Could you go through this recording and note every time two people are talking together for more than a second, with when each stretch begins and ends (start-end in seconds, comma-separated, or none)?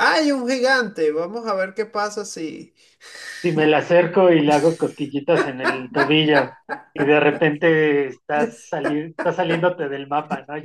none